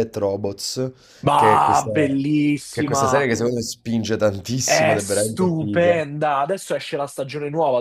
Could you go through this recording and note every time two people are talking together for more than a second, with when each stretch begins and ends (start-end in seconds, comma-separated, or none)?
4.6-5.9